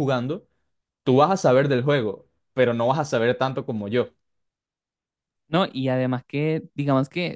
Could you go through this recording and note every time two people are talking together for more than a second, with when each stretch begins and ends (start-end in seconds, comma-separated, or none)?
none